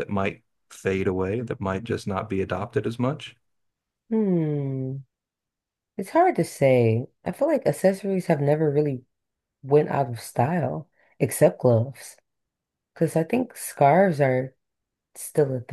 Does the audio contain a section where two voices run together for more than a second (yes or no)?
no